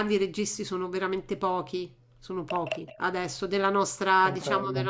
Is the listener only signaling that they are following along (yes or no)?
yes